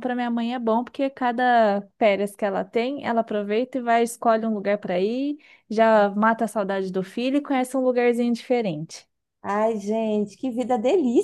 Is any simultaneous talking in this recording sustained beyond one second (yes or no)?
no